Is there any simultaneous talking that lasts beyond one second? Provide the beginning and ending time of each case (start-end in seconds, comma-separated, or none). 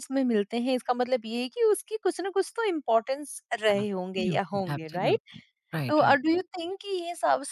3.8-5.2